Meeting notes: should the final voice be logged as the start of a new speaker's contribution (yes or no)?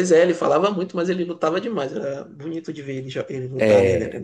yes